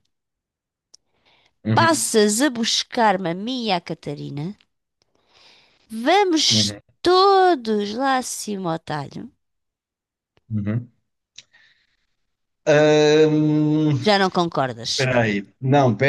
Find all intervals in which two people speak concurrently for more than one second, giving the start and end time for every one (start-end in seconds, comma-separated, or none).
none